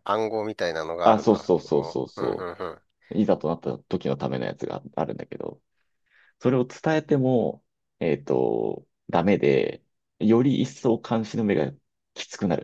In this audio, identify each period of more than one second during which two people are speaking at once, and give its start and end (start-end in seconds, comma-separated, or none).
1.0-2.5